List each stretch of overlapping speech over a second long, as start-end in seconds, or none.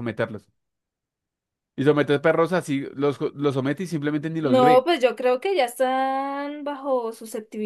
none